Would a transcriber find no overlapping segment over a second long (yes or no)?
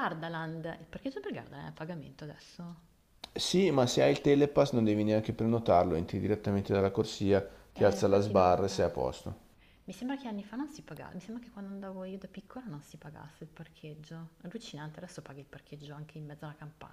no